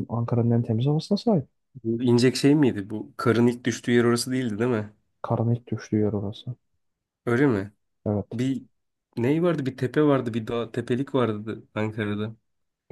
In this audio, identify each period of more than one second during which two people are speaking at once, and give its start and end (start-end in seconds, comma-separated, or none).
none